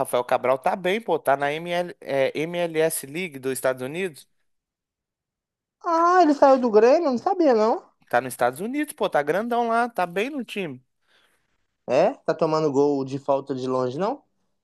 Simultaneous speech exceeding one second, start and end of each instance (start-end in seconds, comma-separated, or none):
none